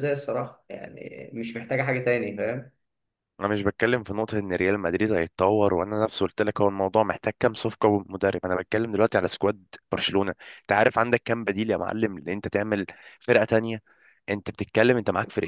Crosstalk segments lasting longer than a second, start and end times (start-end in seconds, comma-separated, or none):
none